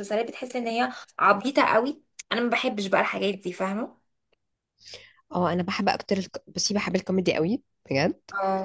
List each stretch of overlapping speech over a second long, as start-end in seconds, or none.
none